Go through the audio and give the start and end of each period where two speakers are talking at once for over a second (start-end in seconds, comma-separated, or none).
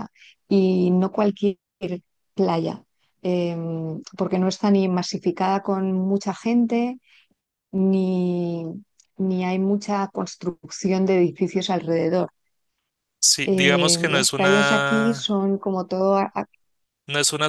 13.4-15.3